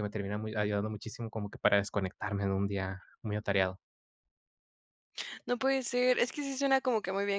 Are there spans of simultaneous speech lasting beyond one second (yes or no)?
no